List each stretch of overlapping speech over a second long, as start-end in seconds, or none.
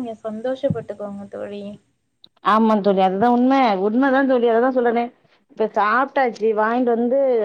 none